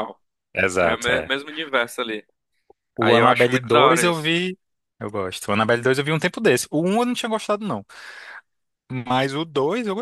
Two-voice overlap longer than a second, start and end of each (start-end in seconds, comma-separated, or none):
3.0-4.3